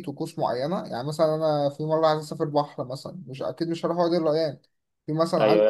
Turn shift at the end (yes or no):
yes